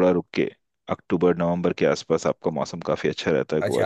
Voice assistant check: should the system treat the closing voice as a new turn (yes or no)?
yes